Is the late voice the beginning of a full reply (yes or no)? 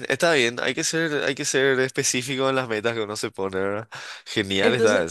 yes